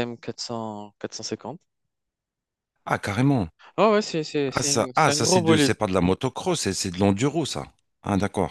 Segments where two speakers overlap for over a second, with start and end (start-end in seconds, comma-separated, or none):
4.5-5.7